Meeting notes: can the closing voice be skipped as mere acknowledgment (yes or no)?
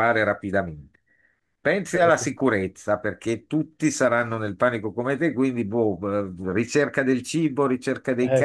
no